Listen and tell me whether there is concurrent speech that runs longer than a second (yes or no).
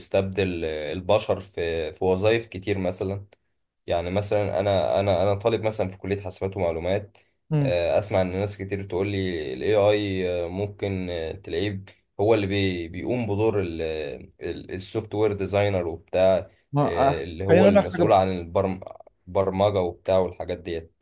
yes